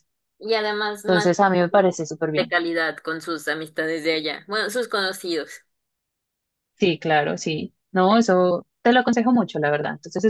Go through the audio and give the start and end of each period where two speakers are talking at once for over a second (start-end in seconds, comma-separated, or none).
1.1-2.5